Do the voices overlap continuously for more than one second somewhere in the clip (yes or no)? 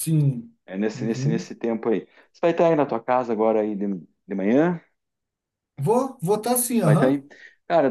no